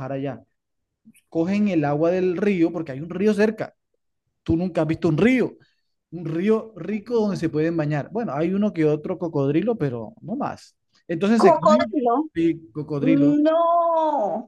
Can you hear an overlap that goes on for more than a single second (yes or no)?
no